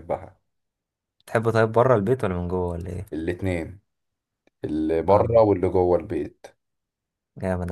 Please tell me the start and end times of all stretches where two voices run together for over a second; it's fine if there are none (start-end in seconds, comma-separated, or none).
none